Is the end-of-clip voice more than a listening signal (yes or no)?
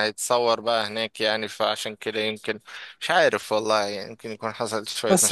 yes